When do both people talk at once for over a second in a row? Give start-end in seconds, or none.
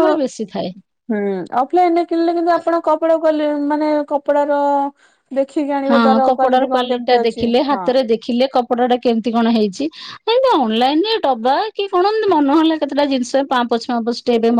5.9-7.9